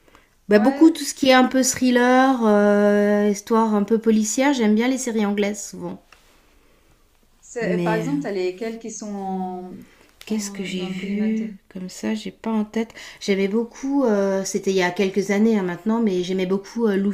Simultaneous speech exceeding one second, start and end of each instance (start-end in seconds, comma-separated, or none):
10.3-11.5